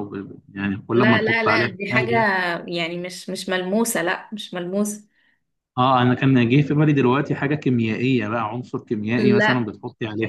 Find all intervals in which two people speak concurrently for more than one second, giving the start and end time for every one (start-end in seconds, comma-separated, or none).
0.9-2.1